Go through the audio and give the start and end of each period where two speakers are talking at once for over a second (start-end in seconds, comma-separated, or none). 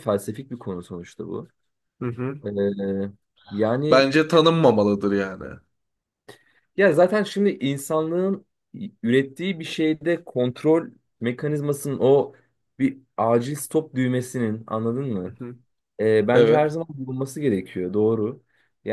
none